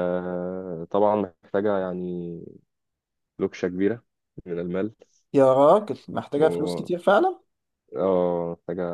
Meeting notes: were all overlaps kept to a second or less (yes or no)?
yes